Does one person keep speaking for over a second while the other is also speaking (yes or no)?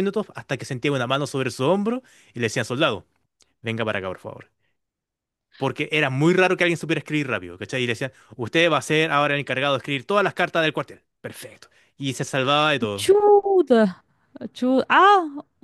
no